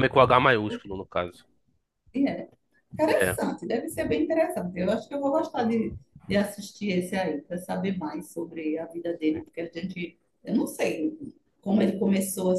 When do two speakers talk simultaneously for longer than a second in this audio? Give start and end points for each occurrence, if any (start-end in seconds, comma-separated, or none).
none